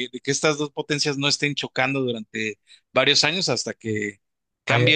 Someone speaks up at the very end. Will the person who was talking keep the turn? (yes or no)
yes